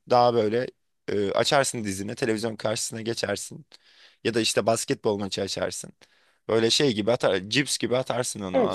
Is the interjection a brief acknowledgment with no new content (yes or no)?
no